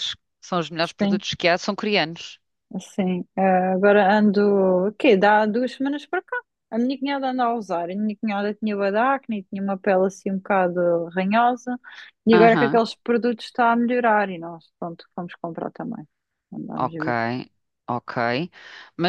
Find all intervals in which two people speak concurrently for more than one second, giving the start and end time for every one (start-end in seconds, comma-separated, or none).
none